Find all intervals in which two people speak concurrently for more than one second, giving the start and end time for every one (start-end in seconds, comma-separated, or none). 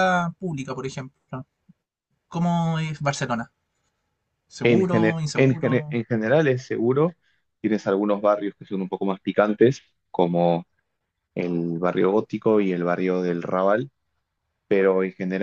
4.6-6.0